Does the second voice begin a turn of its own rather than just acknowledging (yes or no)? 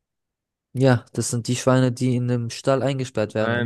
yes